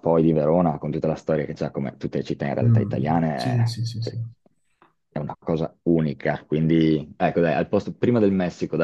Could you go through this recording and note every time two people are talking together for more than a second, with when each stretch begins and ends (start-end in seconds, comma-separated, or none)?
2.6-4.2